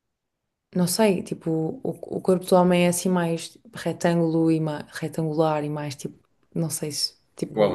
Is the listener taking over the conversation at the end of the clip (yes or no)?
yes